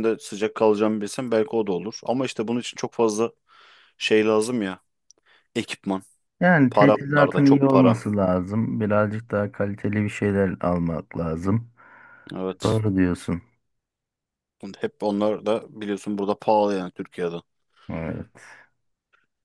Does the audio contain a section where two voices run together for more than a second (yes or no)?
yes